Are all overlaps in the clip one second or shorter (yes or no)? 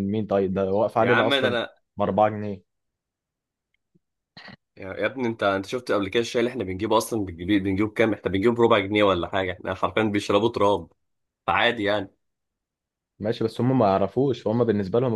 yes